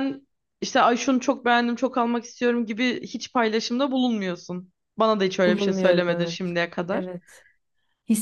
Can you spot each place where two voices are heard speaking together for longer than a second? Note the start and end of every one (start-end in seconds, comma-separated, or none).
5.5-7.0